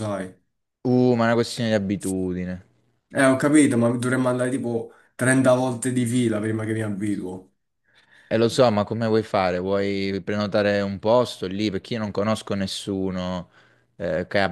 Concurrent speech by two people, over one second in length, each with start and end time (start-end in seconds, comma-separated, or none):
none